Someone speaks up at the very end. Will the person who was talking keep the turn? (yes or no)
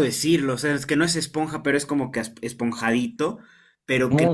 yes